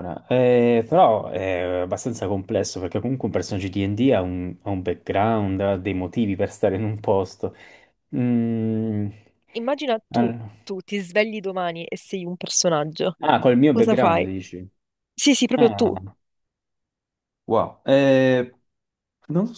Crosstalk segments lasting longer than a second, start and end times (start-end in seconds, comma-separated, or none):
none